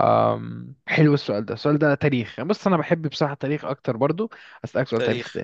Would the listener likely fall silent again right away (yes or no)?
yes